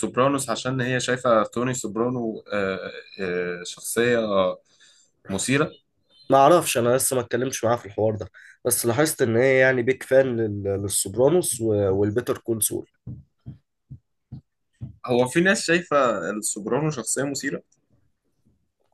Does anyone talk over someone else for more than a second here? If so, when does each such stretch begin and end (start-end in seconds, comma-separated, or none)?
none